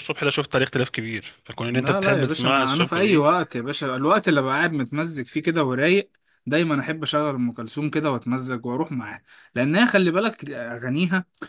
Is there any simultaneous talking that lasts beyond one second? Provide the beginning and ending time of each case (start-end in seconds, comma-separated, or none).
1.7-3.3